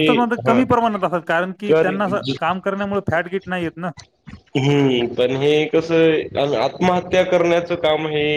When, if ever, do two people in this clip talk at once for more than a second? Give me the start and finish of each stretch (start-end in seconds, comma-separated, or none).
none